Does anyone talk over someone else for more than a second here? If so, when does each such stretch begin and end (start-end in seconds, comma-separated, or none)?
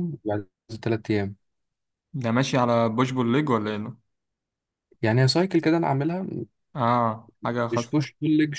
none